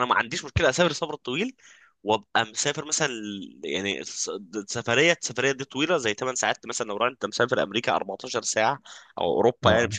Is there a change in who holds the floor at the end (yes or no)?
no